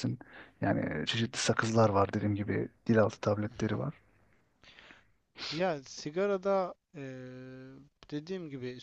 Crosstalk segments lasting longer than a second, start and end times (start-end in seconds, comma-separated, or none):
none